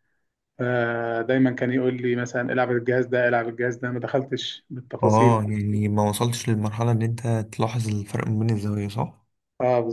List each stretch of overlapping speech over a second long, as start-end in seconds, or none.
none